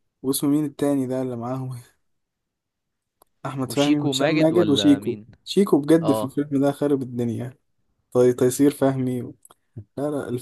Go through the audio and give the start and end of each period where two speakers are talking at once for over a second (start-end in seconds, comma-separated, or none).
3.6-5.3